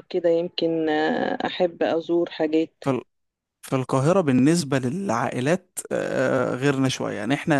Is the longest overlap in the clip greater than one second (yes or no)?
no